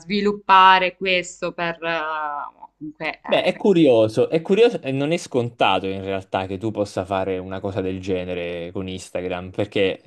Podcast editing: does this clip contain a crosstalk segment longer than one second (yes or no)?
no